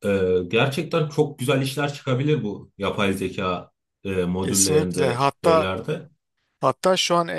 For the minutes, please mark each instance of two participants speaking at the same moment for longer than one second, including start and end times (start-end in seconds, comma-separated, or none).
4.4-5.7